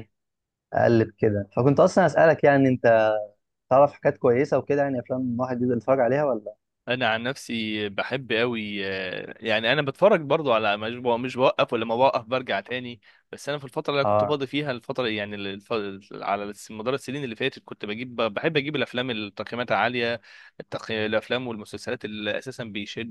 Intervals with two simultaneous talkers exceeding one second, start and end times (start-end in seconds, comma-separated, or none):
none